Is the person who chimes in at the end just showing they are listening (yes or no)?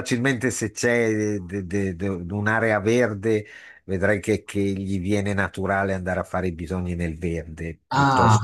no